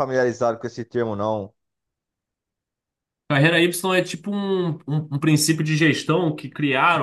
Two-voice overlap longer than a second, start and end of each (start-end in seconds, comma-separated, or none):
none